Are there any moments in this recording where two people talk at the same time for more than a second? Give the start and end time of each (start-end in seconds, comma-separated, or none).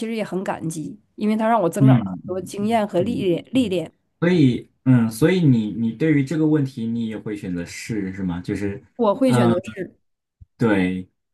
1.8-3.8